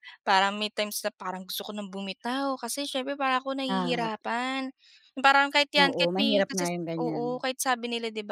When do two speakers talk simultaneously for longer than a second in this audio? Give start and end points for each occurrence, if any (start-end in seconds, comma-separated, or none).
5.8-7.4